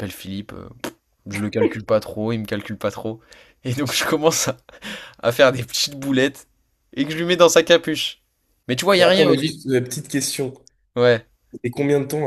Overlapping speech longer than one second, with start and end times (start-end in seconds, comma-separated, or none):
none